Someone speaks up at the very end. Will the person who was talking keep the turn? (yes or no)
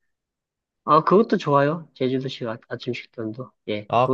no